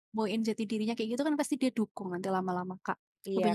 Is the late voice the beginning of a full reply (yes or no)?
yes